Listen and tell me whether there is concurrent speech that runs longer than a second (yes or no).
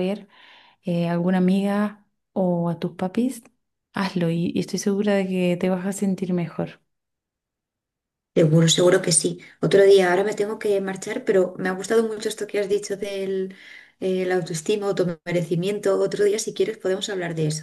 no